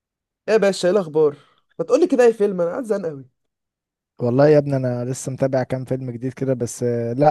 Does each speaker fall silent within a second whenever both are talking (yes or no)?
yes